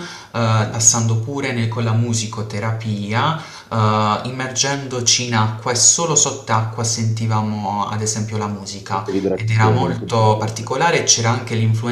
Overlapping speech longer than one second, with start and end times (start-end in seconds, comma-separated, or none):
8.9-10.7